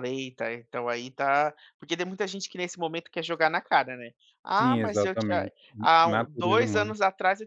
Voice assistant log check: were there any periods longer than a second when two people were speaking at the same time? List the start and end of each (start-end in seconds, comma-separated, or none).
4.6-6.9